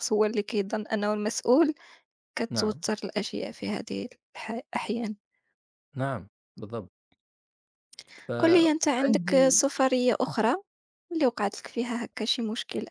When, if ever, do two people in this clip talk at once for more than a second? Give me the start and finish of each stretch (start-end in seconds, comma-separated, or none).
8.4-9.6